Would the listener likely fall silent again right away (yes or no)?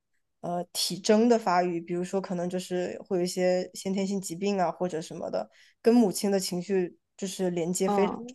no